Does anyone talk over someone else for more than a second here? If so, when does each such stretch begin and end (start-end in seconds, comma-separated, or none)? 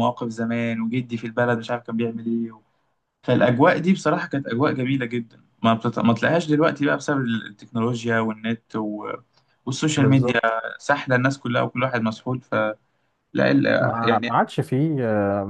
none